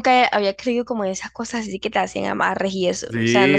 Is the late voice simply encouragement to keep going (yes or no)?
no